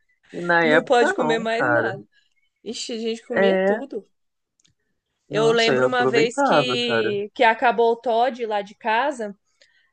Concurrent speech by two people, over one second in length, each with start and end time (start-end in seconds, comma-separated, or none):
0.6-1.9, 5.3-7.1